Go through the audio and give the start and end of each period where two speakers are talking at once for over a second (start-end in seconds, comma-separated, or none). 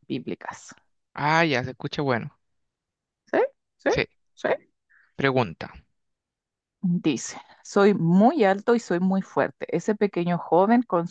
none